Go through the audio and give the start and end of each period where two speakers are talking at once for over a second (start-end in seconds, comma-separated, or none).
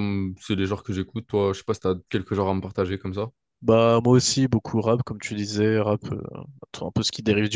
none